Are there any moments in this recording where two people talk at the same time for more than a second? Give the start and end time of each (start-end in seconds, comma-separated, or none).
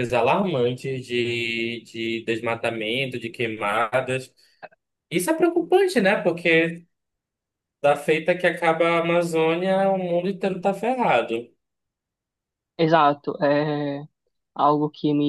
none